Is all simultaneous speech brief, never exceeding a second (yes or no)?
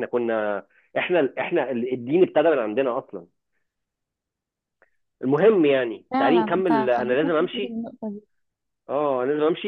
no